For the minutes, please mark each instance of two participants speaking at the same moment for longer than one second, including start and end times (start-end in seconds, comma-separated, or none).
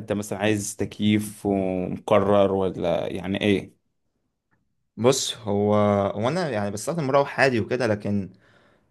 none